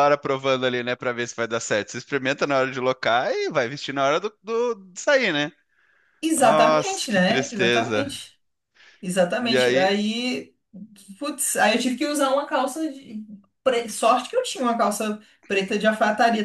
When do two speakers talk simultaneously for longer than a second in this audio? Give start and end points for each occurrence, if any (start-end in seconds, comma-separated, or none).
6.3-8.2